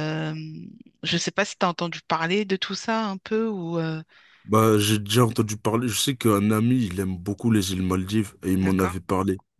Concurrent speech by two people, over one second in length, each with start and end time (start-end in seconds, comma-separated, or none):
none